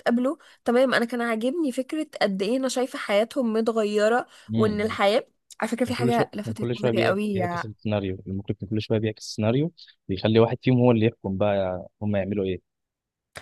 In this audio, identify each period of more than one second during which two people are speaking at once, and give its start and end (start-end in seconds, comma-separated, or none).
5.8-7.6